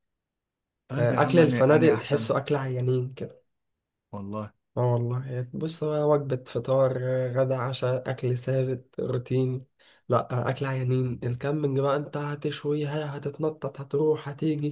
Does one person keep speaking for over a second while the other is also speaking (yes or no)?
yes